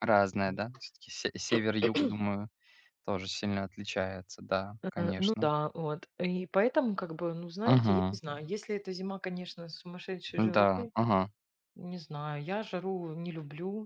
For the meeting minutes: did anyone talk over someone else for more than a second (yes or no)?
no